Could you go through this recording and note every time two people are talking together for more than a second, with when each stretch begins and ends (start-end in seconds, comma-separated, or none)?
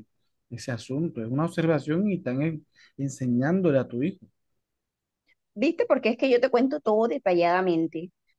none